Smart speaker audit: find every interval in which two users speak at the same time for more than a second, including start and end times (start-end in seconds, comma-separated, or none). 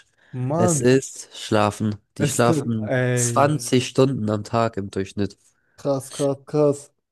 2.2-3.5